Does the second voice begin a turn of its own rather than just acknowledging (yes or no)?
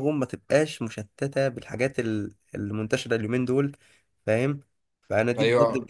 no